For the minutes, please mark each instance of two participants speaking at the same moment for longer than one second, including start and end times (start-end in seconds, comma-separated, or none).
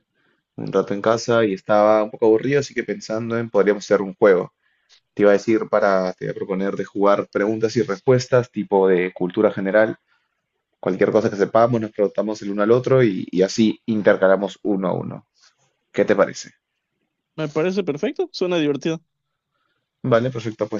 none